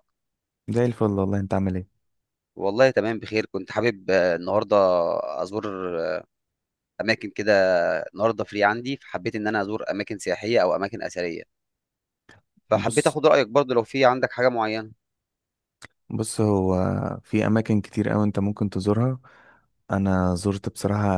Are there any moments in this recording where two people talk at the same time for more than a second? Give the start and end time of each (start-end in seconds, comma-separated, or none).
none